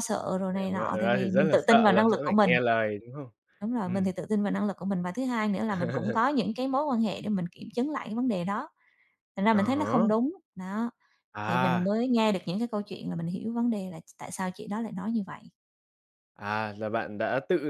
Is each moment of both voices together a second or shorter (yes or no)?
no